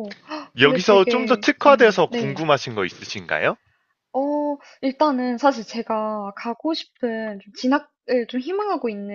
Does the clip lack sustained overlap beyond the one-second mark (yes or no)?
no